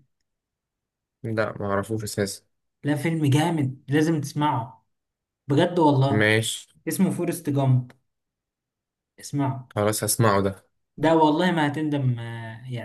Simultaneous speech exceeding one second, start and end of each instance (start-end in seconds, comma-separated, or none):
none